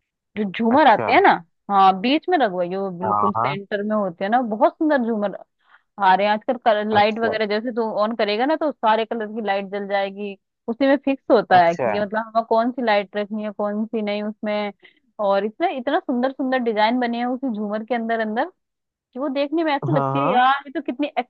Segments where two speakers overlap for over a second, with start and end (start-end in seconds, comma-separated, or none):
none